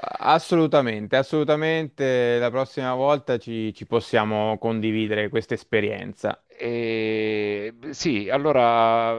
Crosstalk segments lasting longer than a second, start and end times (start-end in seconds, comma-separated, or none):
none